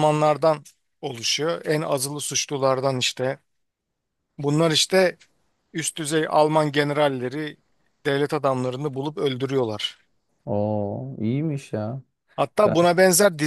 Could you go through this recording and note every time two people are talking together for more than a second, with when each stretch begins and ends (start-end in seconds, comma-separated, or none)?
none